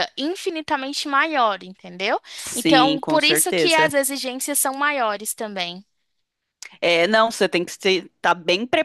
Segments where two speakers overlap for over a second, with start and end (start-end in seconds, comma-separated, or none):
2.4-3.9